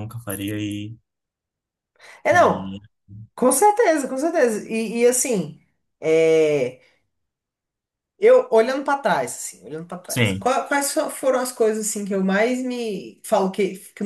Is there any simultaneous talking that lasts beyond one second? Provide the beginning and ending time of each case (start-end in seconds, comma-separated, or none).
none